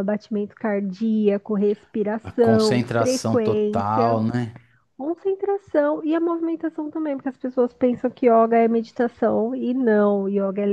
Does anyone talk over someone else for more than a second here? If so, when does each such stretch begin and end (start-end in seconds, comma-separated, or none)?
2.2-4.2